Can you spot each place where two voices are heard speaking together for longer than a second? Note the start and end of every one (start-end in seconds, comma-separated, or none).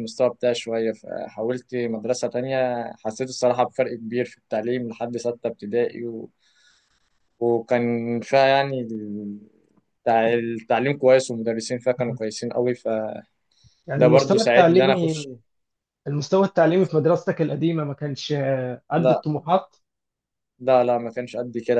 14.0-15.3